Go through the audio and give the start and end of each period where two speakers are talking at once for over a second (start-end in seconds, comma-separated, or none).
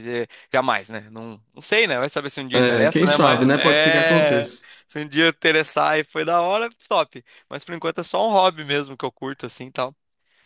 2.5-4.5